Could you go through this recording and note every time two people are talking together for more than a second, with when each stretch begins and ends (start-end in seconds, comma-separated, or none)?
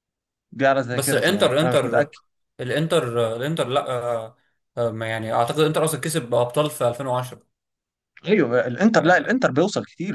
0.9-2.1